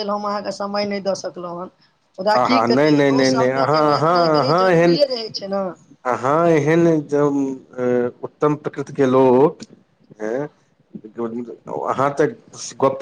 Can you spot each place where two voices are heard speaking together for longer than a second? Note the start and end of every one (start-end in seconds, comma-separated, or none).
2.4-5.0